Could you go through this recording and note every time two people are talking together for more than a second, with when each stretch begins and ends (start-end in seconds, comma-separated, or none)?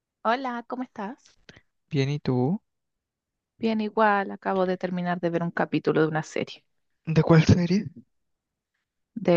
none